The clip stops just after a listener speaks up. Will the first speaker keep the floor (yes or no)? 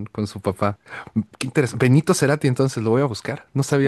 no